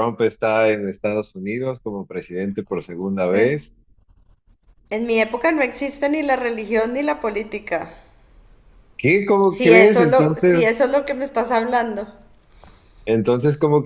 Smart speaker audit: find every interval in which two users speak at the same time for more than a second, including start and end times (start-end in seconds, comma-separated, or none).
9.4-10.7